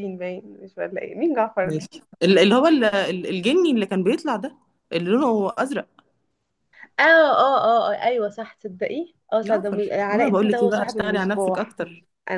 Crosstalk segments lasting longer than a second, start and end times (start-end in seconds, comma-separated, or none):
9.4-11.8